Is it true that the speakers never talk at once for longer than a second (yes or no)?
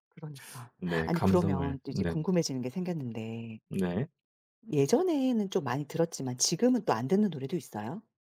no